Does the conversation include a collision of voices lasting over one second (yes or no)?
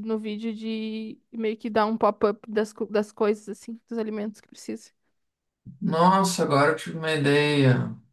no